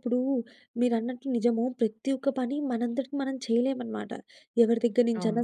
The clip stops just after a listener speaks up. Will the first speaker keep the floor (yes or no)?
yes